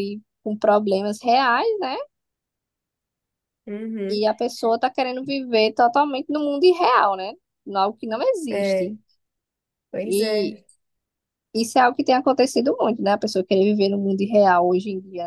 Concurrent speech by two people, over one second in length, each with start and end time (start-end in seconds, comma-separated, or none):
none